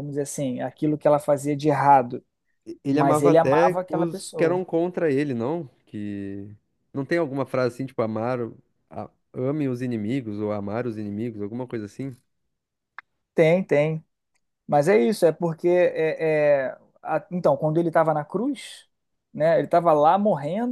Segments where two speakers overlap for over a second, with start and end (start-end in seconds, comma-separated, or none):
2.9-4.6